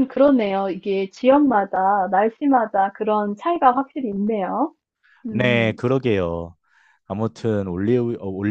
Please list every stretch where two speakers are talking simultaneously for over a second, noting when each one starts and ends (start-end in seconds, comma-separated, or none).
none